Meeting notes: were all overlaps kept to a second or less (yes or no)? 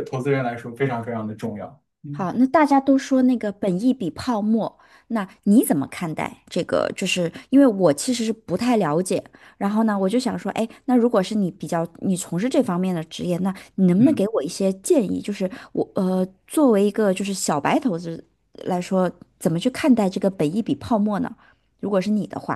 yes